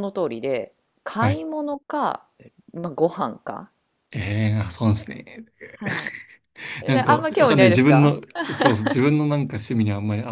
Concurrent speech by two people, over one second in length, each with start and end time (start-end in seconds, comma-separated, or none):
6.9-8.1